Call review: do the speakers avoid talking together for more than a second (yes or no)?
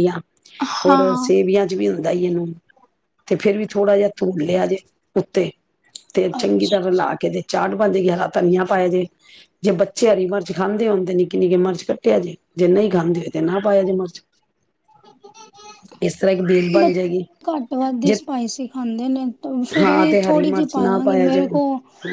no